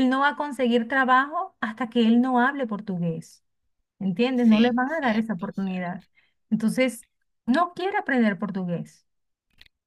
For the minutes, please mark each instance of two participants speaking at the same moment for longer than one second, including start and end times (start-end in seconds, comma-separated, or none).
4.3-6.0